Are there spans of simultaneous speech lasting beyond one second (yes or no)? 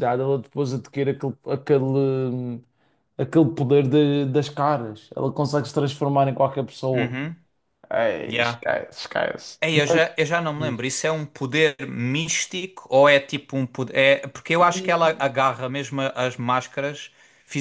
no